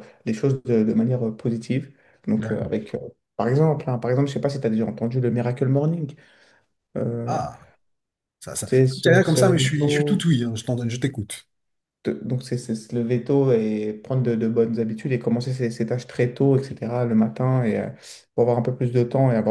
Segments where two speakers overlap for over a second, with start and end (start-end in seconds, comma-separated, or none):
8.6-10.3